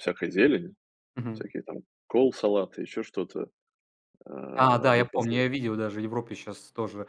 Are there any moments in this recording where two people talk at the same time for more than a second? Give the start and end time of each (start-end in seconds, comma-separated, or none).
none